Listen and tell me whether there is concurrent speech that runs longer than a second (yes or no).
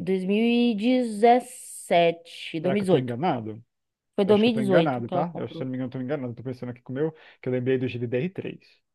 yes